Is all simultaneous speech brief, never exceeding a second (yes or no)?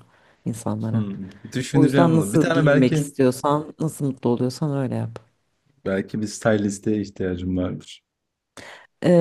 no